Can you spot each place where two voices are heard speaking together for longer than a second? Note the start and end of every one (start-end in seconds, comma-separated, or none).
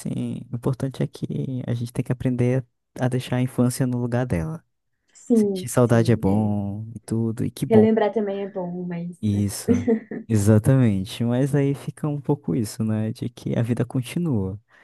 5.3-6.5